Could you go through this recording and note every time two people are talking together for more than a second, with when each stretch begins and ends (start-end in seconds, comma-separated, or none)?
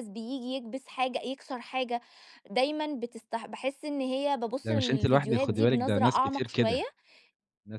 4.7-6.8